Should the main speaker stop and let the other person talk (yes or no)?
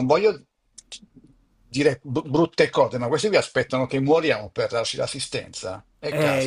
yes